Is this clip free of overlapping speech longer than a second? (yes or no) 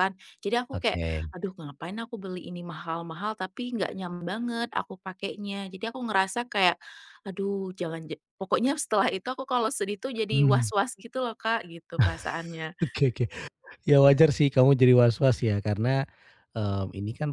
yes